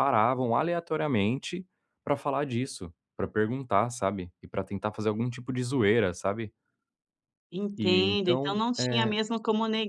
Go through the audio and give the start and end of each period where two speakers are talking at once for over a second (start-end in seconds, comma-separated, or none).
7.8-9.2